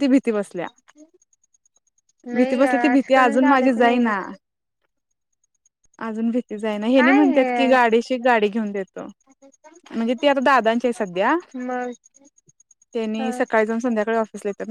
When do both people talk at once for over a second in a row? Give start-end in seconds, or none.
2.4-4.1